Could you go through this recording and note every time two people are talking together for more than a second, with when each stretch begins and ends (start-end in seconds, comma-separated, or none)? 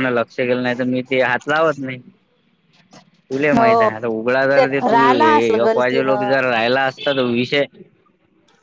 4.9-6.3